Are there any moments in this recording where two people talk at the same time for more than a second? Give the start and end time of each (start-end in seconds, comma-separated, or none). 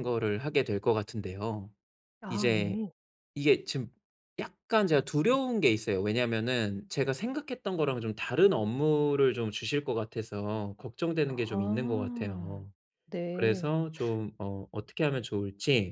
11.2-12.7